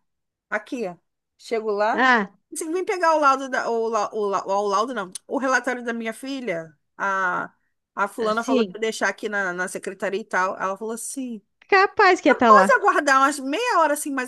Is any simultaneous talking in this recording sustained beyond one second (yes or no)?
no